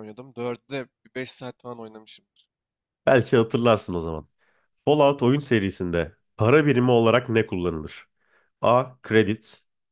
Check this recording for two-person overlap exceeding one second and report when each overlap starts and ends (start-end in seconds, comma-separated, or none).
none